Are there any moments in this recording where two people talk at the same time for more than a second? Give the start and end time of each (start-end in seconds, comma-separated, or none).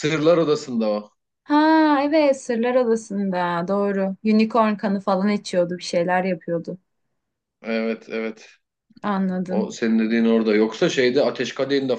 none